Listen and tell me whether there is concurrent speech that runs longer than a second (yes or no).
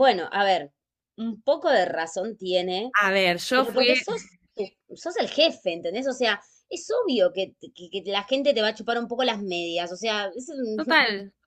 no